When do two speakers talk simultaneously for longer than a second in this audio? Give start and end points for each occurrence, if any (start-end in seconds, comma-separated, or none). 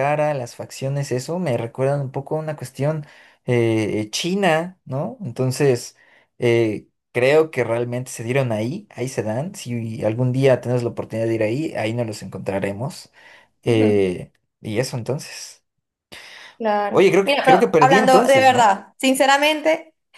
16.9-18.7